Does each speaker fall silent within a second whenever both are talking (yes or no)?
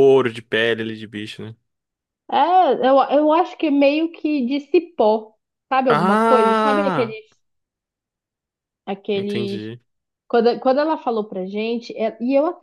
no